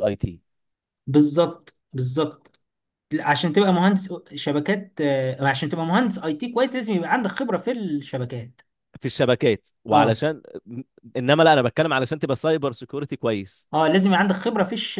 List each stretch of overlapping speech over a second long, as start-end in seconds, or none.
none